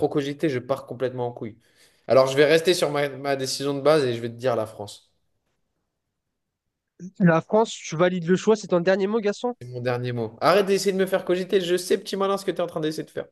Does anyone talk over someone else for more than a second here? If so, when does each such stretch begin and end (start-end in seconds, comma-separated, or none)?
none